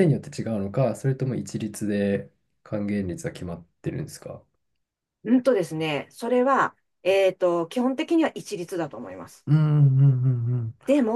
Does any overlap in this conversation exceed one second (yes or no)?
no